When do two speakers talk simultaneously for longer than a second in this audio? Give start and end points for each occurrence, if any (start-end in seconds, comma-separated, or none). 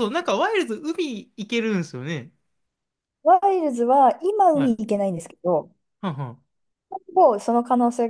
none